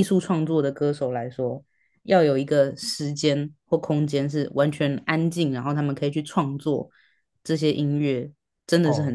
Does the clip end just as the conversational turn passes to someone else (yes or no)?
yes